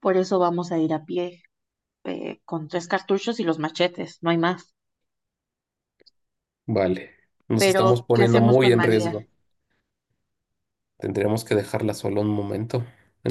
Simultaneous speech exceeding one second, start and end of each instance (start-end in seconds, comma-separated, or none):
7.6-9.3